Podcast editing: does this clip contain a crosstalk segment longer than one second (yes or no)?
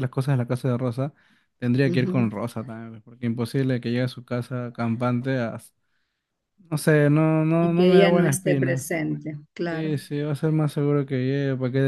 yes